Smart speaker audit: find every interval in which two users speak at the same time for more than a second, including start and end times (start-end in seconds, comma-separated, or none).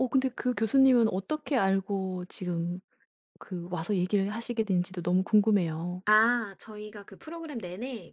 none